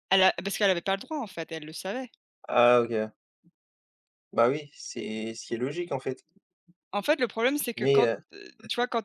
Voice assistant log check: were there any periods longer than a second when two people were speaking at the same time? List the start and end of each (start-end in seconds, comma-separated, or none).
none